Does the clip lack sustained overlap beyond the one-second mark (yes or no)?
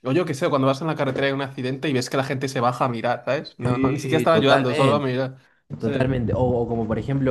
no